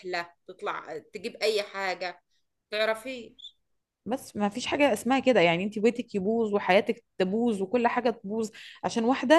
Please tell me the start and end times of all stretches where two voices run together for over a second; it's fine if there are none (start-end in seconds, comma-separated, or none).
none